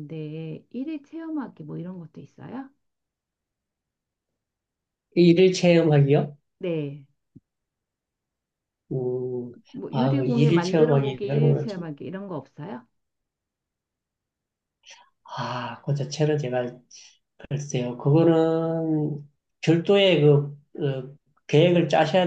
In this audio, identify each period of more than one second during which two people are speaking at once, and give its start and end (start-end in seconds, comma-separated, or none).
9.9-11.9